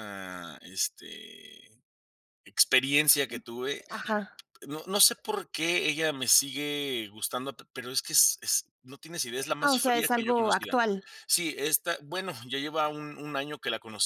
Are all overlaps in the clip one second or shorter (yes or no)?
no